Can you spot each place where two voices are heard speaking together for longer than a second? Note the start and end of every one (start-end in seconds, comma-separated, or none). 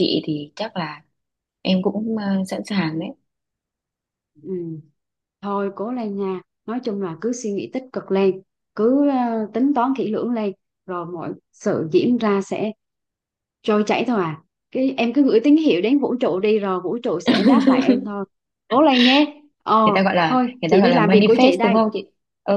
20.3-21.8